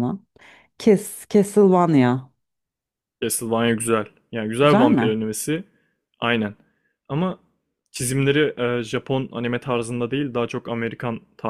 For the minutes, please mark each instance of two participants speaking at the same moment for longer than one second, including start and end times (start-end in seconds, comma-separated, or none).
none